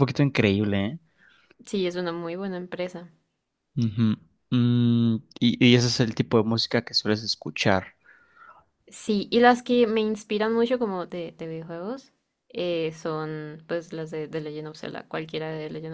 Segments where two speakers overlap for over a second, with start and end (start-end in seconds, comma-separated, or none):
none